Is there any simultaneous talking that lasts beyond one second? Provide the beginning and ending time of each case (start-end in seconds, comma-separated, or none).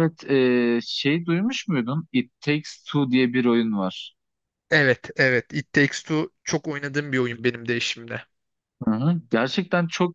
none